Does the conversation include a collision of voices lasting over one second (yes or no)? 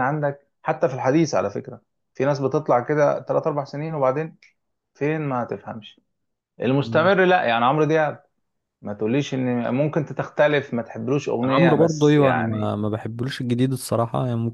yes